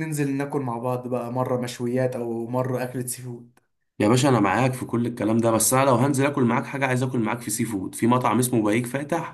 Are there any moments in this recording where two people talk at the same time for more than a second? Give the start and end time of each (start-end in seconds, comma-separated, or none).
none